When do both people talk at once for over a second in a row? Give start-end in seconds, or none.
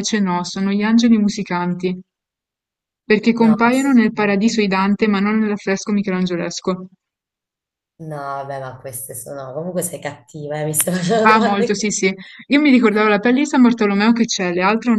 3.4-4.6